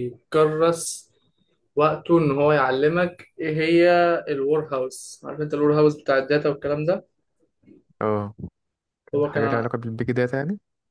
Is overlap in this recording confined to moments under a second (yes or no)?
yes